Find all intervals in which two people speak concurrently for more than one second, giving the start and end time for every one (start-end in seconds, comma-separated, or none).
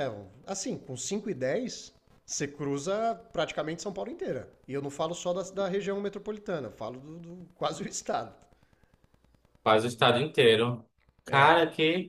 none